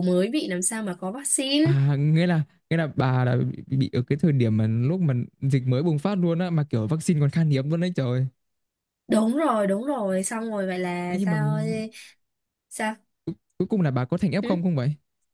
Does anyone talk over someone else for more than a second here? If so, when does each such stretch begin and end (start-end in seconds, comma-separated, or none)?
none